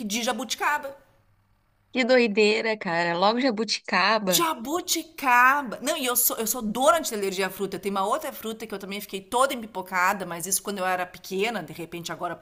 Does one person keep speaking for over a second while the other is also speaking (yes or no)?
no